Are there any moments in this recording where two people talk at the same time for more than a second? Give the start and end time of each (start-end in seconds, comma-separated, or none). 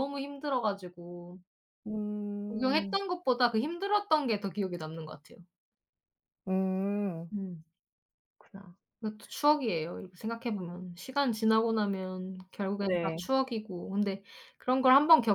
none